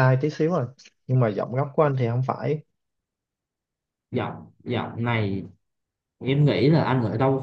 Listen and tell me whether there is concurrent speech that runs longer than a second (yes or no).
no